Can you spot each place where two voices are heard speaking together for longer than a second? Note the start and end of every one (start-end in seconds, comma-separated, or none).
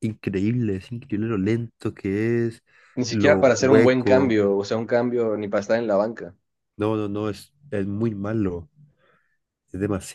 3.1-4.4